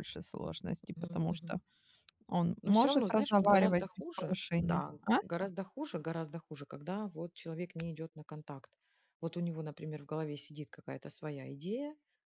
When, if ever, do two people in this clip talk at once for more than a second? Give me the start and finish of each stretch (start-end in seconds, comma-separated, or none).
2.6-5.2